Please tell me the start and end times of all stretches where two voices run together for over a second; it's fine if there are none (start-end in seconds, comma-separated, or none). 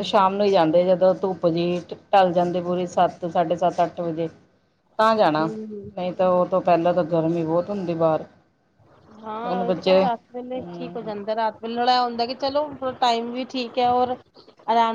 none